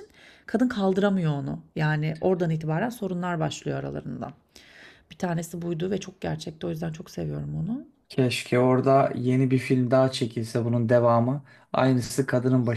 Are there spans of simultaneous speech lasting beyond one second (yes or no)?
no